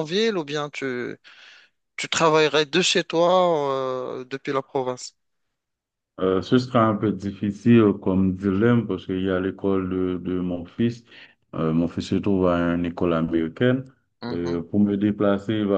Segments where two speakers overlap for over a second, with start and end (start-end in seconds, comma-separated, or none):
none